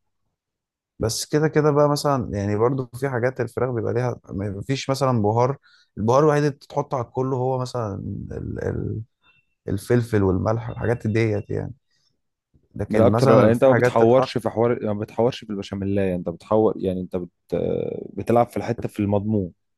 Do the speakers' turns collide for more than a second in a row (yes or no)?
yes